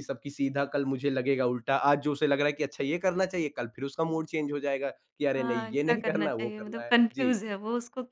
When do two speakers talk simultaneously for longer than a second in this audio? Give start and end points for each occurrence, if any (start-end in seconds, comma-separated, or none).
5.4-7.3